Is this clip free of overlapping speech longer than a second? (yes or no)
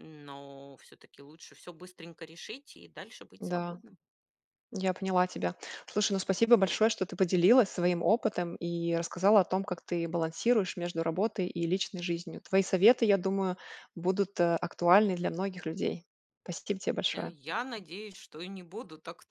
yes